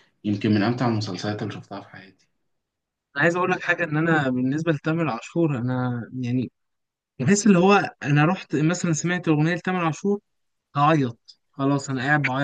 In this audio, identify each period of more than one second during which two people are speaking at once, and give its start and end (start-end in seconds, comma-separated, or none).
none